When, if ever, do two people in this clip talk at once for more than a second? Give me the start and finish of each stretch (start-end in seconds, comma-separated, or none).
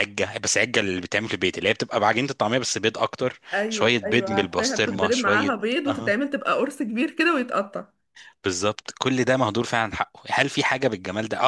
3.5-6.2